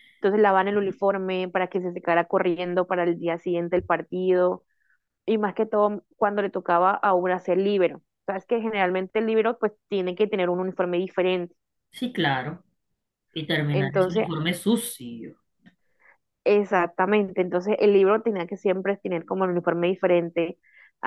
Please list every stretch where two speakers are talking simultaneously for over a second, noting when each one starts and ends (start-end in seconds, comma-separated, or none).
none